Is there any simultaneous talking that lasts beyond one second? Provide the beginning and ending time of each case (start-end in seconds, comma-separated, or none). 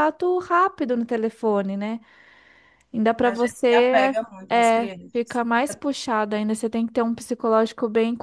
3.2-5.4